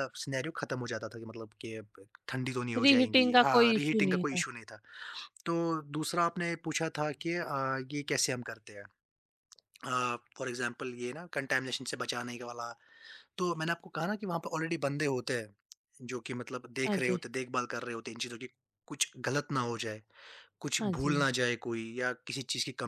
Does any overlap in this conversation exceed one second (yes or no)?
yes